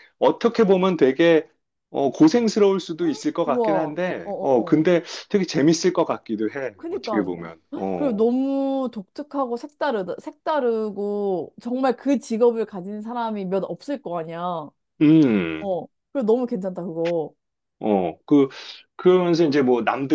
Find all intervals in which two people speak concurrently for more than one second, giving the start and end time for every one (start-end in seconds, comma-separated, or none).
3.4-4.8